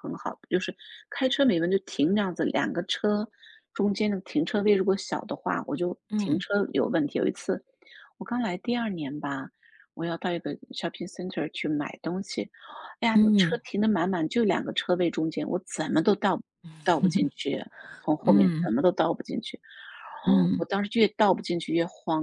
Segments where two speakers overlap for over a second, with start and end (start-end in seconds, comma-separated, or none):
none